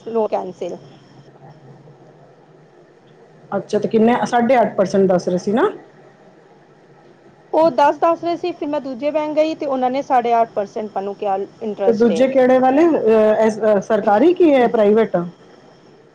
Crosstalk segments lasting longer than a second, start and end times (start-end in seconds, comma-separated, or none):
none